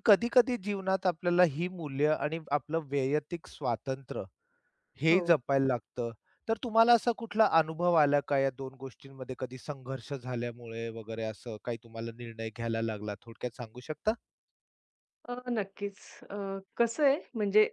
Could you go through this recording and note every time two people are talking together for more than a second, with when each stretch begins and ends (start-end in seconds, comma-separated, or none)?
none